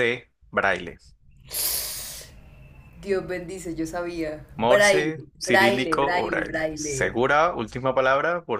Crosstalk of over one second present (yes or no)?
yes